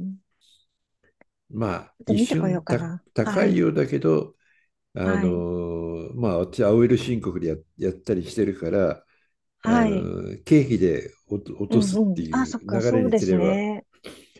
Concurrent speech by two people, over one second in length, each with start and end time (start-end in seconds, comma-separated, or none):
2.0-3.6, 11.7-13.6